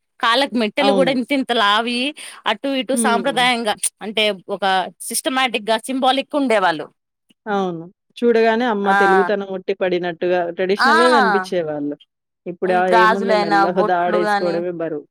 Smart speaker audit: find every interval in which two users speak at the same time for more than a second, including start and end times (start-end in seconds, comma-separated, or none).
13.0-14.5